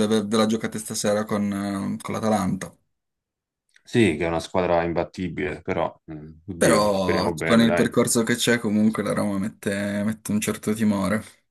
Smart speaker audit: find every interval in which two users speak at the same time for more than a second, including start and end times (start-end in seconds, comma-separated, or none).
6.6-7.9